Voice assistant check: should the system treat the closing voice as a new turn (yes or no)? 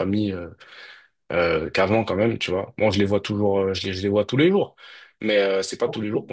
no